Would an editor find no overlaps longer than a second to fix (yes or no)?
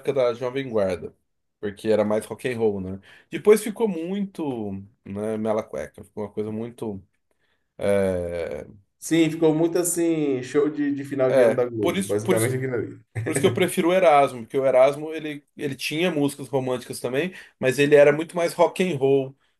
no